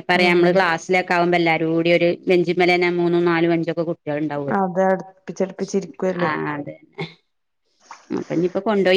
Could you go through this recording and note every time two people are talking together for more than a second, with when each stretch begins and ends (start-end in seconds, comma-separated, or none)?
none